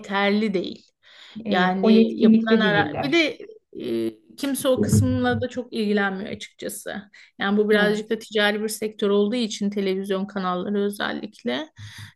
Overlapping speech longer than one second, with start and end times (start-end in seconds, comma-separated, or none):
1.5-3.2